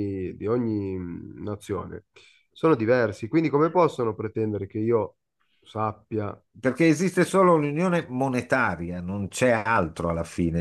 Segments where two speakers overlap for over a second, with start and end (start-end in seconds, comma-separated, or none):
none